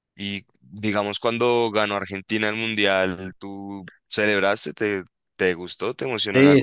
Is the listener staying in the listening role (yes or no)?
no